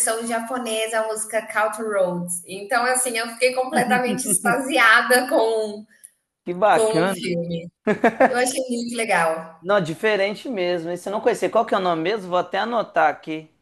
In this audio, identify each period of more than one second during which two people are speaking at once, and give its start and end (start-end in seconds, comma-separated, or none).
none